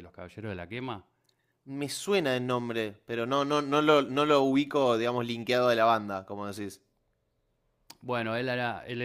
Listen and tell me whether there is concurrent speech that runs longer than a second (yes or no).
no